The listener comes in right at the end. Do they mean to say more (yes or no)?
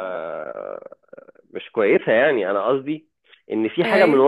no